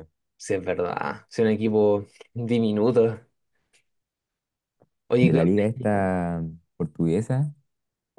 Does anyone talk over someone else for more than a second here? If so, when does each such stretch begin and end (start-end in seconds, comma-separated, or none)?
none